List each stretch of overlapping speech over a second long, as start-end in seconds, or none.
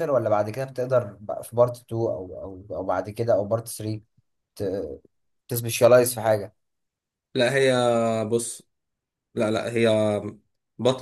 none